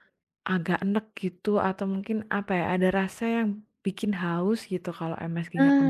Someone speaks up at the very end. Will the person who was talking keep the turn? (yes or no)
no